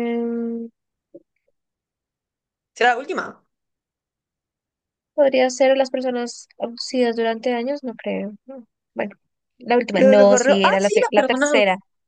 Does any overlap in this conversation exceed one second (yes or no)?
yes